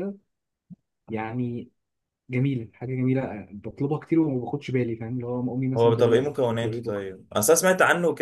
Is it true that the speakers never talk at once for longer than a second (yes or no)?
no